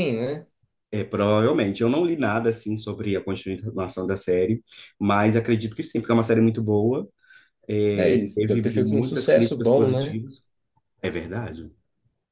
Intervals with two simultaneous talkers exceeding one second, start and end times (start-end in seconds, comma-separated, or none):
8.0-10.2